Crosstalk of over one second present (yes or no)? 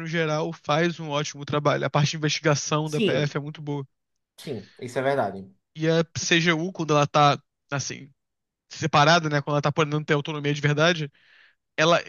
no